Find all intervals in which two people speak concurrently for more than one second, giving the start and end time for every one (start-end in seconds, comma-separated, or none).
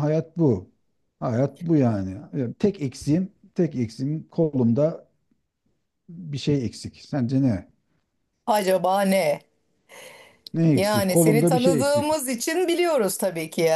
10.7-12.1